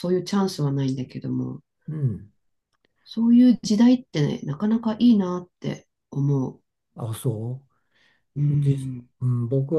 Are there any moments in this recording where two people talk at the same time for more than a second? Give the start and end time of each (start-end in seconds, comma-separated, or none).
none